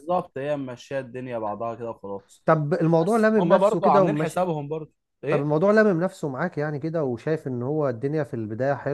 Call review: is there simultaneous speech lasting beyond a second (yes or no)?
yes